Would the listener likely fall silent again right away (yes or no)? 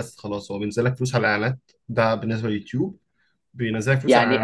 no